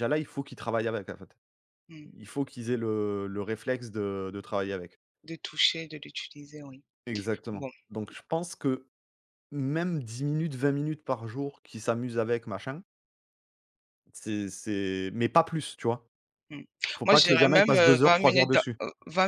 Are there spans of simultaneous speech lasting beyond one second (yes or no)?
yes